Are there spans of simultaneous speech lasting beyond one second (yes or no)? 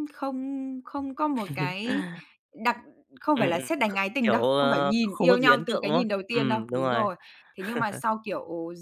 yes